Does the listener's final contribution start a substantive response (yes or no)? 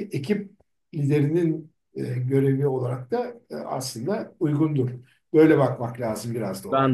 yes